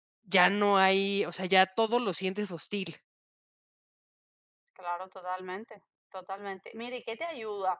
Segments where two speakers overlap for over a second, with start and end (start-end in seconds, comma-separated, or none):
none